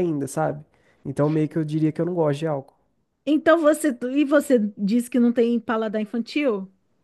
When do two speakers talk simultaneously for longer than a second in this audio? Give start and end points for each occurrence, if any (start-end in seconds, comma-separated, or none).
none